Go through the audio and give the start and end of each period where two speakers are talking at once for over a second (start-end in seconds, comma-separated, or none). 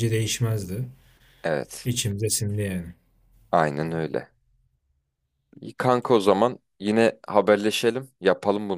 none